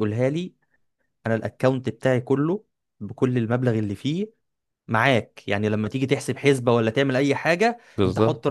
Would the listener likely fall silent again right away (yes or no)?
yes